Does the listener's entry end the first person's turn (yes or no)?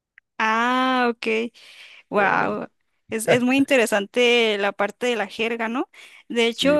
no